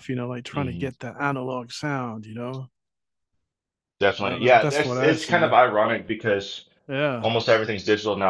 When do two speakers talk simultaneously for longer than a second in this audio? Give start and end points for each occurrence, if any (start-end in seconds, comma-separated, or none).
4.2-5.6